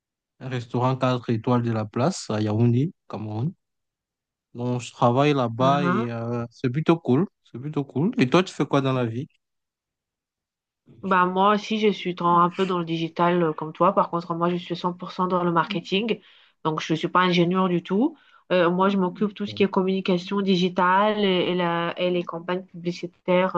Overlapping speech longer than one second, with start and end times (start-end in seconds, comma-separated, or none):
none